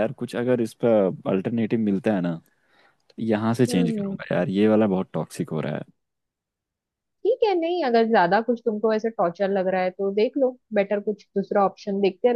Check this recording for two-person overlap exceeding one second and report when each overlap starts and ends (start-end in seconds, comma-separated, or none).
none